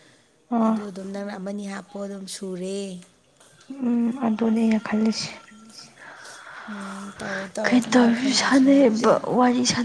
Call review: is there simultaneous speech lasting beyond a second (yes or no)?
yes